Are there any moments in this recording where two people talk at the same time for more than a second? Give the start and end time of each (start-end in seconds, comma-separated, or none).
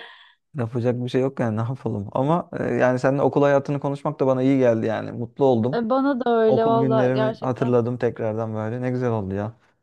6.5-7.8